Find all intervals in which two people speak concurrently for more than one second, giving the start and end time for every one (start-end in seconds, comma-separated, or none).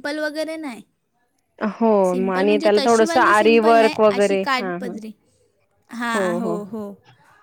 2.1-4.9